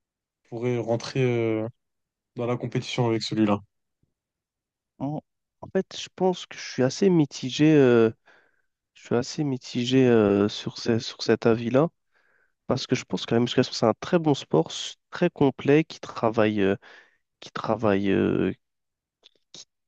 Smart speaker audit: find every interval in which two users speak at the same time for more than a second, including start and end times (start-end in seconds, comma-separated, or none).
none